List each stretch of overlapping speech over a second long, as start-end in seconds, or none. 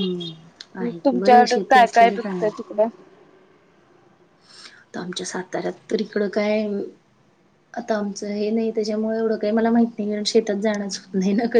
1.1-2.6